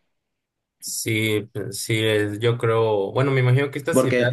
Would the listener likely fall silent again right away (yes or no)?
yes